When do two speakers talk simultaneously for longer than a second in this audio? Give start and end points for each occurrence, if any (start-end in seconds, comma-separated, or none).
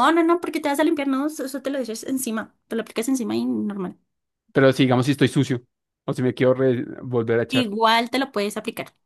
none